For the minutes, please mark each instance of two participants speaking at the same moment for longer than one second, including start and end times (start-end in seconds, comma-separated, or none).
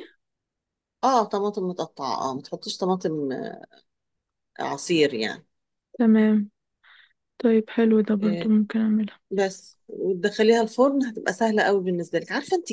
none